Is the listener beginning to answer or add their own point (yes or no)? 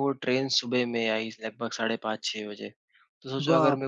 no